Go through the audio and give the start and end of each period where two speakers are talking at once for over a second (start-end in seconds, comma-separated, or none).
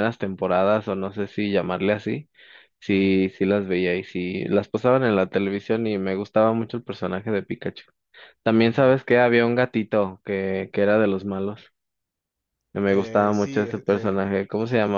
12.9-14.2